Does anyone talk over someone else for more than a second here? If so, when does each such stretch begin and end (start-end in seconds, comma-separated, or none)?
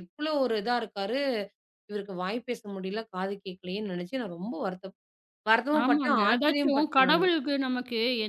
5.8-7.2